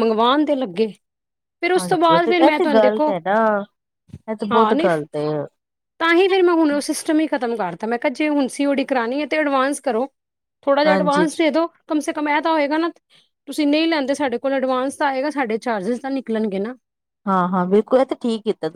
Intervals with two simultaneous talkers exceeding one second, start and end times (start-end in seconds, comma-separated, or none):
none